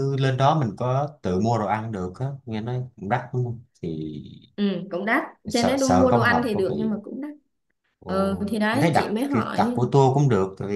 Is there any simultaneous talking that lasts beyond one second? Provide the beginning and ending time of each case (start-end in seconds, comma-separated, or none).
5.5-7.0, 8.1-9.8